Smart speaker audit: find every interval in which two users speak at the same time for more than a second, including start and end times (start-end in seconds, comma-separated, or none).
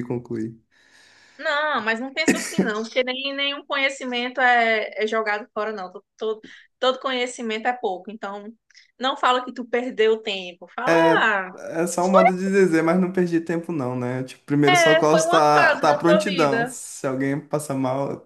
14.7-16.8